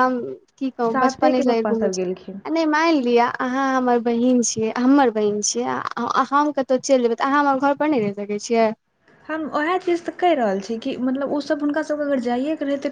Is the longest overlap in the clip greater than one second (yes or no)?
yes